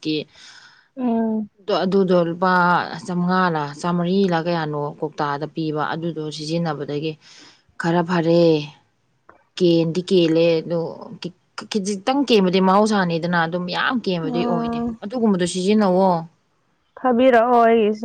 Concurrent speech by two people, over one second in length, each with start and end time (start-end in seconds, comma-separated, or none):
none